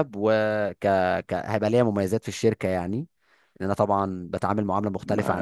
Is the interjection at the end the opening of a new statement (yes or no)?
yes